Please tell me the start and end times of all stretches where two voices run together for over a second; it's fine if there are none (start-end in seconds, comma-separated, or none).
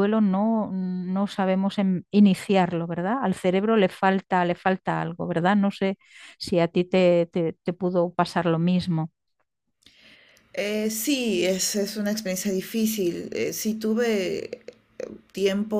none